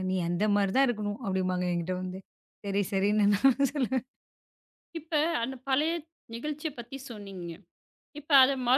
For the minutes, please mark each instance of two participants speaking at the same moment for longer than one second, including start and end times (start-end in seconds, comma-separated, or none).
none